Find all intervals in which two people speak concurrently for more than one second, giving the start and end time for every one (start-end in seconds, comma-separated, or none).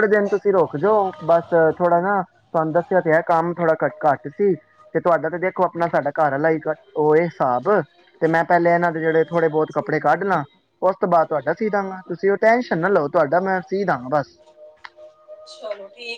9.0-10.4